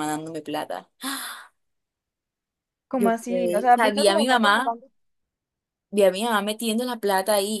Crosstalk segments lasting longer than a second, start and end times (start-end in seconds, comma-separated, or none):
2.9-4.7